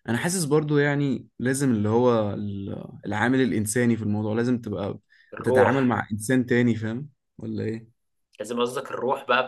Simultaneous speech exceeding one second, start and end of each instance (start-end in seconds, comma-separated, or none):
none